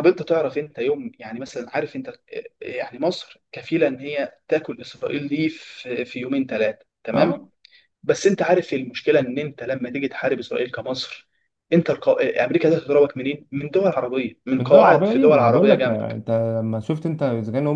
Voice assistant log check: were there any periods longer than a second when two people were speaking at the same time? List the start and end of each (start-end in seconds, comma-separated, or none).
14.6-16.2